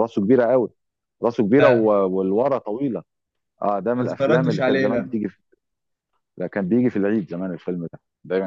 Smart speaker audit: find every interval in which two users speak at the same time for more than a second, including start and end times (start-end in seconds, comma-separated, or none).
4.0-5.2